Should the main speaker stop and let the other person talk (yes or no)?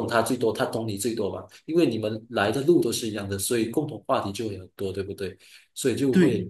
no